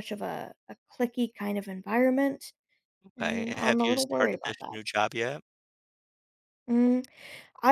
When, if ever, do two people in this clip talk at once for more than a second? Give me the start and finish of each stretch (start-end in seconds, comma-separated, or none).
3.2-4.8